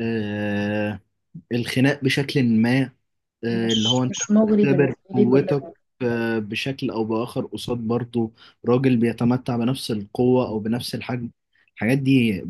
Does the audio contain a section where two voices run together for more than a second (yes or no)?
yes